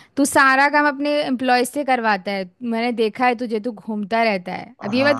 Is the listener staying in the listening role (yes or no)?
no